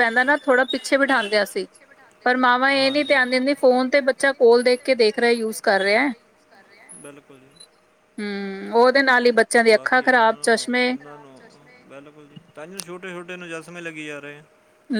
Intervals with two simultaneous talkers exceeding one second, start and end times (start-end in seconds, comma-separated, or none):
3.6-6.1